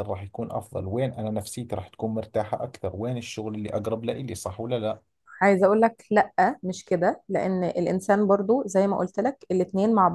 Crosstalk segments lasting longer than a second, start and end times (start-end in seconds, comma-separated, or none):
none